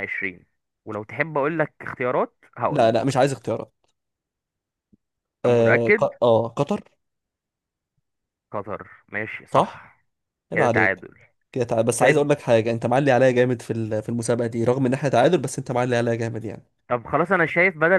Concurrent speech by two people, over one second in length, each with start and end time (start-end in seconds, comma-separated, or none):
none